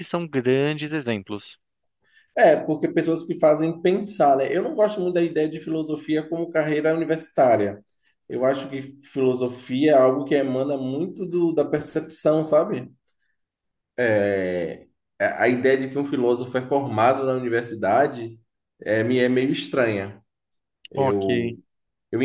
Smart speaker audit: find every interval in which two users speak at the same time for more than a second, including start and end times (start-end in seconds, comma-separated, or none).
none